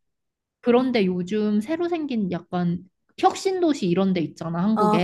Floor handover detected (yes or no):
yes